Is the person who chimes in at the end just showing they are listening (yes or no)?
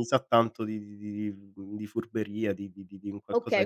no